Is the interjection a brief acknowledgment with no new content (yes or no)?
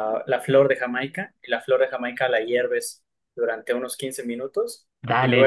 no